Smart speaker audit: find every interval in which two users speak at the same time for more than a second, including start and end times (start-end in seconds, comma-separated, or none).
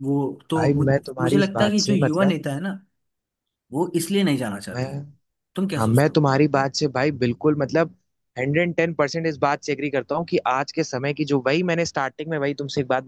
0.6-2.4